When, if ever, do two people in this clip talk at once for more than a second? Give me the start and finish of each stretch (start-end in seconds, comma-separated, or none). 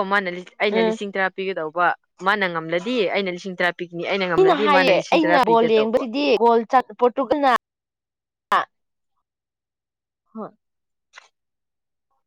4.3-6.0